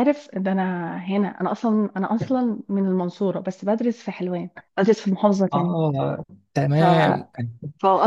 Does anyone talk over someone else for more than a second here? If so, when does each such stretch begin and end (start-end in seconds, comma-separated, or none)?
none